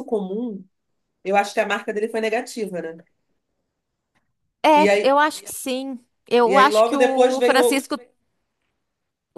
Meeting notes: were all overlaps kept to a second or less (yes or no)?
no